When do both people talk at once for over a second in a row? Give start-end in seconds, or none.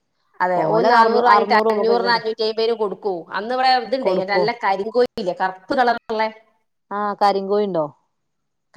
0.6-2.2